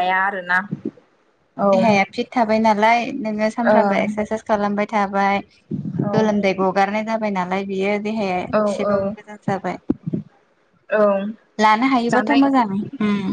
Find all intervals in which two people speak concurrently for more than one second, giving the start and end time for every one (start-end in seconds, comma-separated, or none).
none